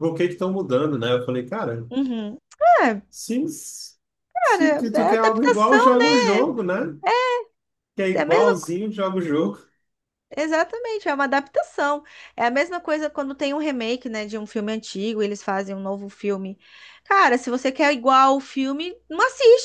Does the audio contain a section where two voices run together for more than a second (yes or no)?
yes